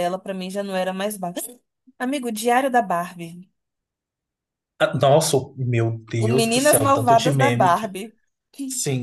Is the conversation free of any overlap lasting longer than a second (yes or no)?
no